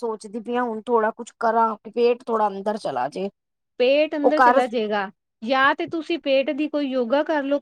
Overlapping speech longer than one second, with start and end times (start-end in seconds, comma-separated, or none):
none